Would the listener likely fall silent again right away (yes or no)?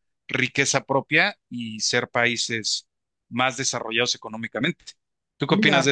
no